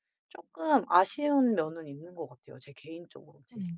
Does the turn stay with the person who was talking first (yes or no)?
no